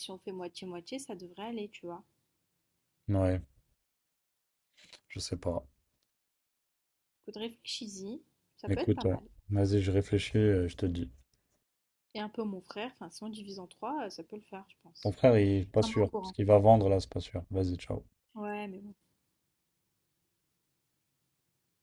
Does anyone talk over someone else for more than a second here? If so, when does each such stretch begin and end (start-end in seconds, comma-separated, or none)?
none